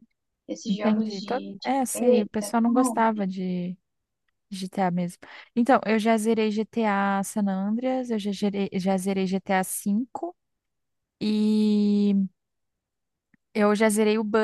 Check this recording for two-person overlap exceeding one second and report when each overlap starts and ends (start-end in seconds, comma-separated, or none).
0.7-3.2